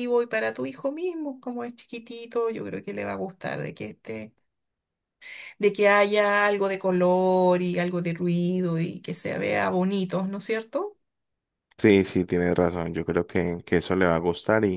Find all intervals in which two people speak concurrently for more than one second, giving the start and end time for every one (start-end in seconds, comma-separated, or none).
none